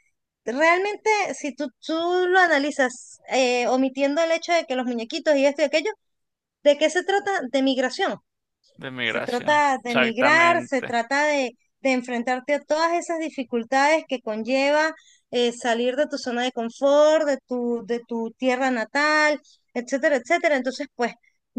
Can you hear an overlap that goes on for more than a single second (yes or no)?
yes